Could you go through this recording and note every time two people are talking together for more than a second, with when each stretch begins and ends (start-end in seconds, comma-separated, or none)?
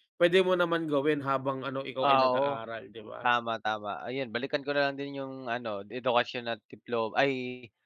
none